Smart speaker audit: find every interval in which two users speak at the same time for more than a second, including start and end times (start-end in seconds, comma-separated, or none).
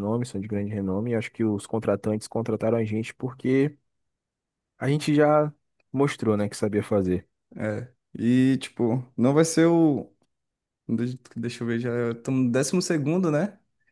none